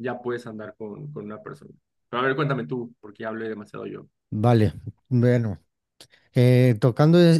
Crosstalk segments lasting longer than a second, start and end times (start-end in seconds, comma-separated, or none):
none